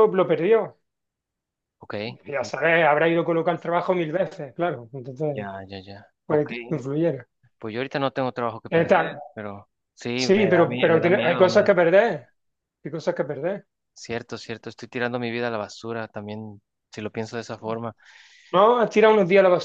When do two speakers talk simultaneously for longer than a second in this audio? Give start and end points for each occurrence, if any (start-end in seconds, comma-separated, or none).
10.2-11.7